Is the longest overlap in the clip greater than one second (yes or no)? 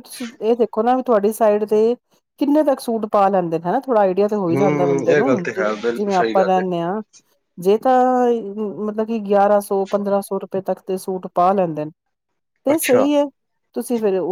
yes